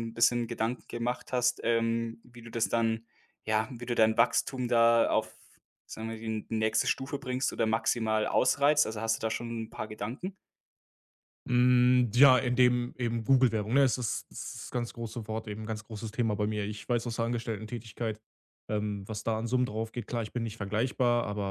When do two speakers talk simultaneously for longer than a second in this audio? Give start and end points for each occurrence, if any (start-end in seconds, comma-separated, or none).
none